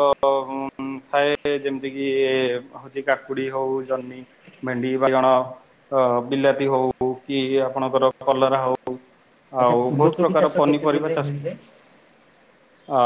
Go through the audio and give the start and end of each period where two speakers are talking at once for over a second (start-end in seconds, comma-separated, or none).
9.6-11.4